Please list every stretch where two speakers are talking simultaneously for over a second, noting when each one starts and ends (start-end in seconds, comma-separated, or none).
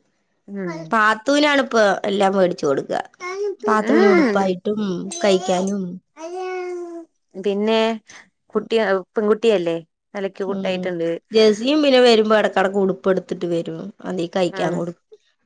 none